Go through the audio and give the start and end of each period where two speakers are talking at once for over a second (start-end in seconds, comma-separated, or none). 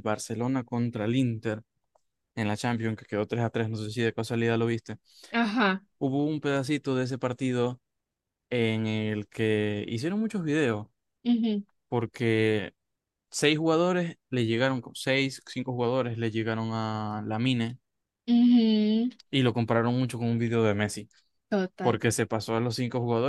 none